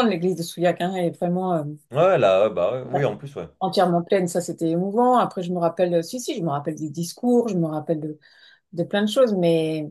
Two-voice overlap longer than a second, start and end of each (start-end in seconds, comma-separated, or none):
none